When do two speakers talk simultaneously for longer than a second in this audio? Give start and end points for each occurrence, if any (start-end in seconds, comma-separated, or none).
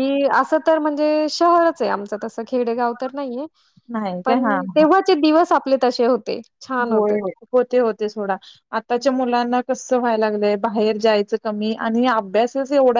none